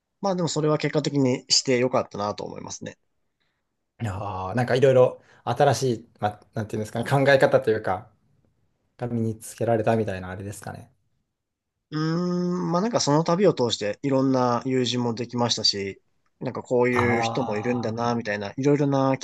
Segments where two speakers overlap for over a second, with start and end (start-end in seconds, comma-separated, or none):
16.9-18.2